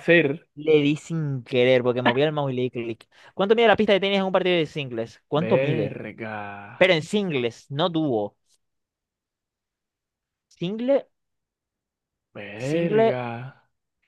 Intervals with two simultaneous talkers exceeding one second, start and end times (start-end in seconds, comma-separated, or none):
none